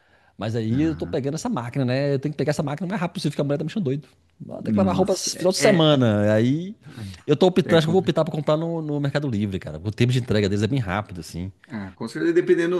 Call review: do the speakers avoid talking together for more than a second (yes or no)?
no